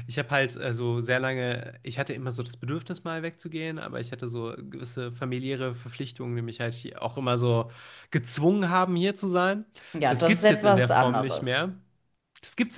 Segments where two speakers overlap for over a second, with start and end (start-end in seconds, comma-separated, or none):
10.1-11.7